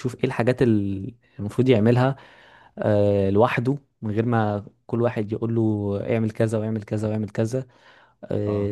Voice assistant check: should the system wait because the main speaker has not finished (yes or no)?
yes